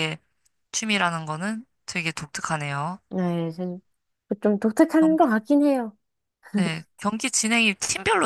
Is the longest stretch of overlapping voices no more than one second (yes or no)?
yes